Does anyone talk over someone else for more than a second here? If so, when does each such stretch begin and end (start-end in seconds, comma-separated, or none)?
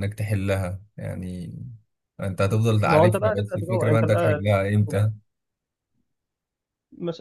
2.8-4.4